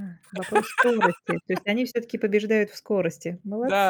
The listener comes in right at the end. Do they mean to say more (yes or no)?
yes